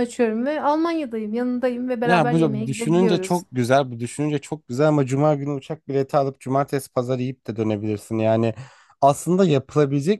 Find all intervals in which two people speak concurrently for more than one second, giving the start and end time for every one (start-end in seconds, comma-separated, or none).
2.0-3.4